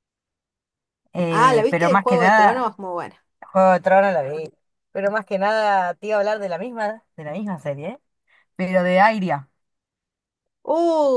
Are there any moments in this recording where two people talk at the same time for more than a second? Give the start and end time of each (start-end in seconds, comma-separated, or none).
1.3-2.7